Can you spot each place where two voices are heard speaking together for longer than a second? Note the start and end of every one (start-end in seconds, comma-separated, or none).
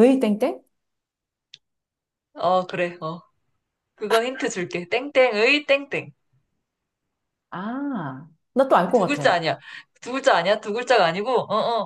none